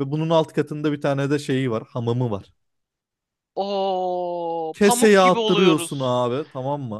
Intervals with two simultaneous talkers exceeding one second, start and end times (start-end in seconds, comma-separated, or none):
4.7-6.2